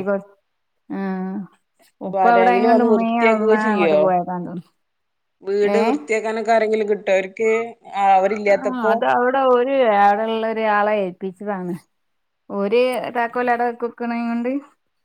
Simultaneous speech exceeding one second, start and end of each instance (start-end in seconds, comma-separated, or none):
2.1-4.0